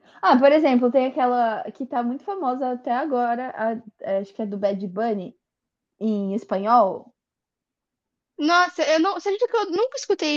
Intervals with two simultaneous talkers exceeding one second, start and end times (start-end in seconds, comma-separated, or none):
none